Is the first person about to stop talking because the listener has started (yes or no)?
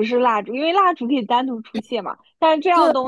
no